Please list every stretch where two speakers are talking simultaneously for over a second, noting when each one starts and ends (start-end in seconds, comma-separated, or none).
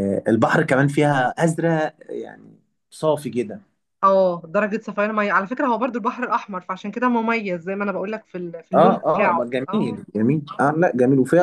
8.7-10.0